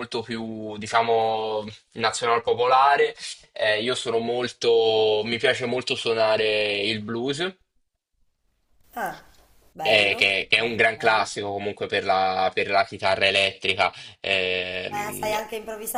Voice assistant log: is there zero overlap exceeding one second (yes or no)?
no